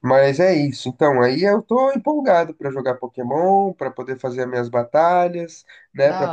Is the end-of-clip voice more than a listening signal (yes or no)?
no